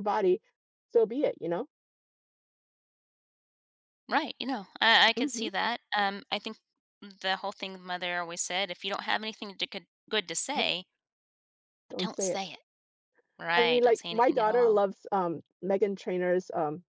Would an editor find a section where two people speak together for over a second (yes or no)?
yes